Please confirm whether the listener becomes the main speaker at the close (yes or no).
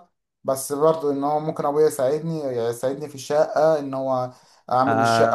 yes